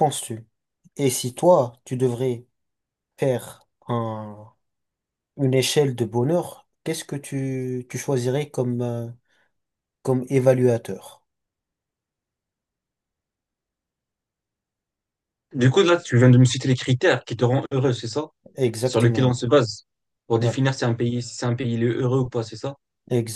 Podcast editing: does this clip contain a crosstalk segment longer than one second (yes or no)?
no